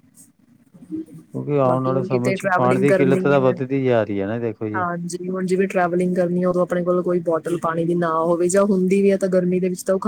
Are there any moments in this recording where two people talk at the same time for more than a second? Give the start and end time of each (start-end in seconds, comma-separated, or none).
1.7-3.5